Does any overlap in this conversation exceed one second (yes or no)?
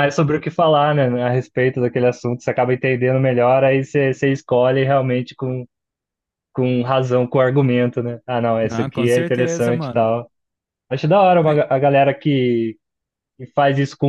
yes